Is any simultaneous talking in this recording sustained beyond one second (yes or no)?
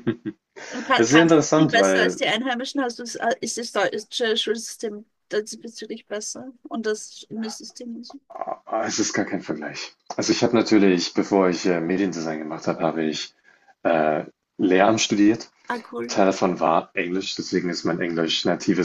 yes